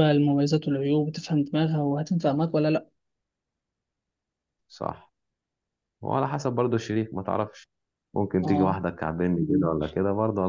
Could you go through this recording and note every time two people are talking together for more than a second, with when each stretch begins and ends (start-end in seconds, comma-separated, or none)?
none